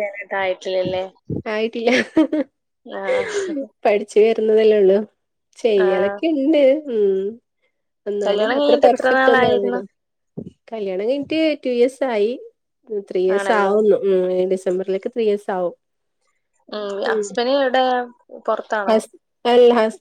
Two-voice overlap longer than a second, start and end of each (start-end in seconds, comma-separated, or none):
8.2-9.8